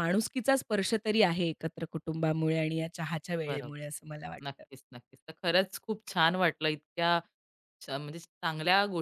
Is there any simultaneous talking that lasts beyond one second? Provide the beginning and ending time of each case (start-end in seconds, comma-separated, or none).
none